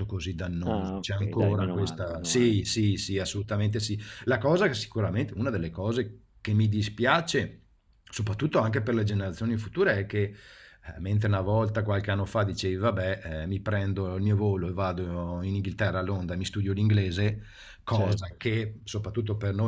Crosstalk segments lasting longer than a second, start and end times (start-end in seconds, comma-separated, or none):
0.6-2.5